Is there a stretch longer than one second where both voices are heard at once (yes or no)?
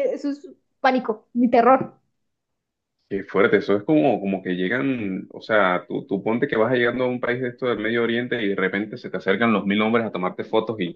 no